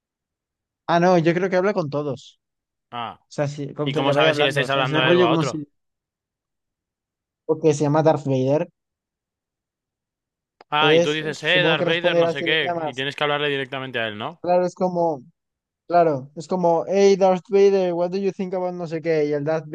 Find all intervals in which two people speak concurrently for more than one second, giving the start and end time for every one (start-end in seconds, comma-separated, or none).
3.8-5.6, 10.8-13.1